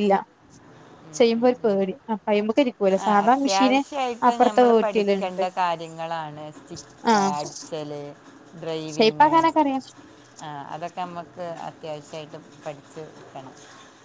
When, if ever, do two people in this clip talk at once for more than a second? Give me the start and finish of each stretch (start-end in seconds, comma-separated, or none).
none